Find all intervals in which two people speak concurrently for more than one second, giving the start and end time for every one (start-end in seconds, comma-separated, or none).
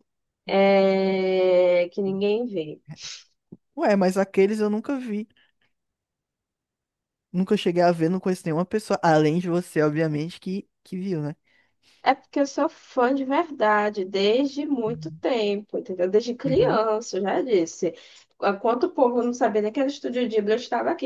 none